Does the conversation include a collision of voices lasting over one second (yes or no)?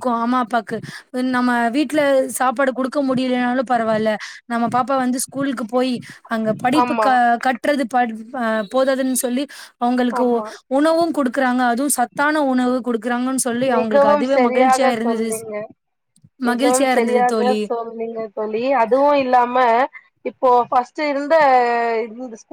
yes